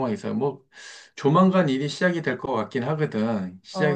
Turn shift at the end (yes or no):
no